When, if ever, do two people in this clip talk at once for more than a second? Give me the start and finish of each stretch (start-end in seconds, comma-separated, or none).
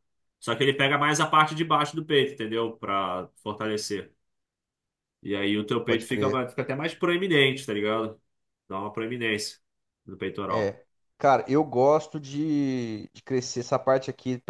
none